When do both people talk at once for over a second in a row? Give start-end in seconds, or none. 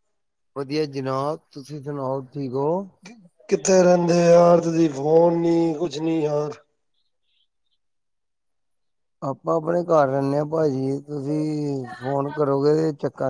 none